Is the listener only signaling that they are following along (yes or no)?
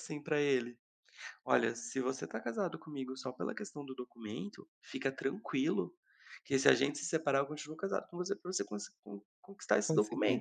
yes